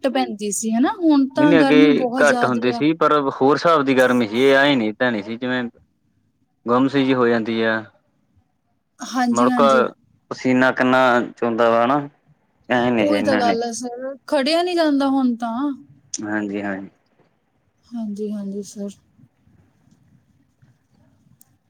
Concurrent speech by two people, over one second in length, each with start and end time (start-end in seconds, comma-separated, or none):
1.4-2.8